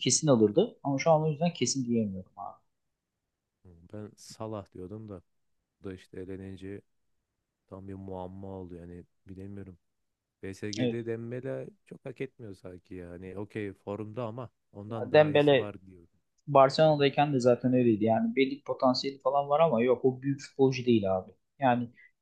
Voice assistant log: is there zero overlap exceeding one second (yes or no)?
yes